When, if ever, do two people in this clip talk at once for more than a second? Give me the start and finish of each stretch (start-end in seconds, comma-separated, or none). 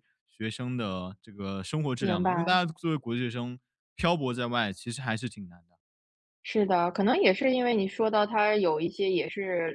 none